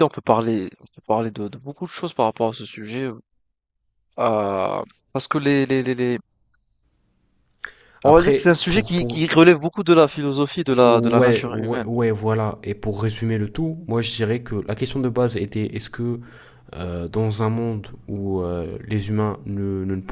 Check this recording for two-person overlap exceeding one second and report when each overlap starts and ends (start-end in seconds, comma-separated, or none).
8.0-9.2, 10.7-11.9